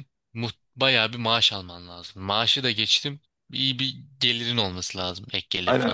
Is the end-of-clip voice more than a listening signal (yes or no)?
yes